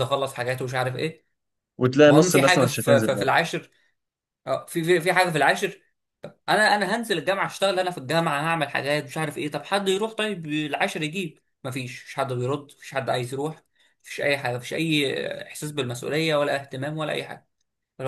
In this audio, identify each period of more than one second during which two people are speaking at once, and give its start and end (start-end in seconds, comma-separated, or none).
2.1-3.3